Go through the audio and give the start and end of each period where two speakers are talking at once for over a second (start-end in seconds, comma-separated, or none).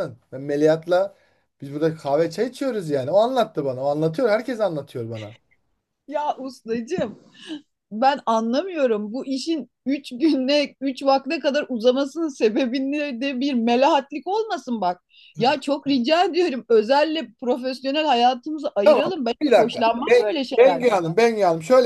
18.8-21.0